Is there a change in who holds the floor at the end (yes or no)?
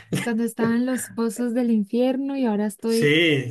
yes